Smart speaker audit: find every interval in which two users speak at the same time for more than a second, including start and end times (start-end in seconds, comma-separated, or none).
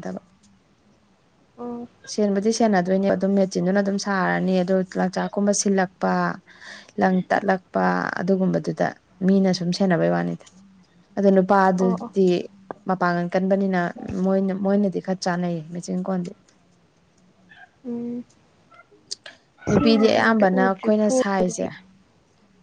19.7-21.6